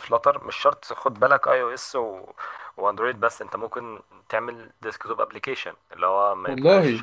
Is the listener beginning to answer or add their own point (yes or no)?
no